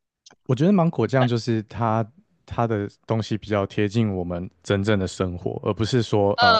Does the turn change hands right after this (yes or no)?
no